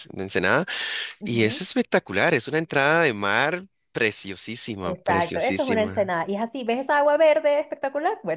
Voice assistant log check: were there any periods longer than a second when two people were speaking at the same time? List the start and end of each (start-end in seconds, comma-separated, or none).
4.8-6.1